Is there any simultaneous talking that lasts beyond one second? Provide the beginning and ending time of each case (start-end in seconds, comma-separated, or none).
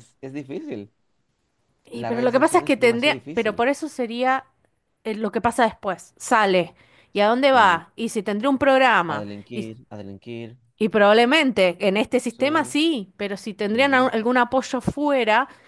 1.9-3.6